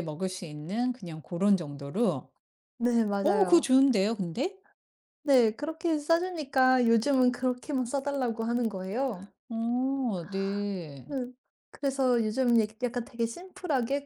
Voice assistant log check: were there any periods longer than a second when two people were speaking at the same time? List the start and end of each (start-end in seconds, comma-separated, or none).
none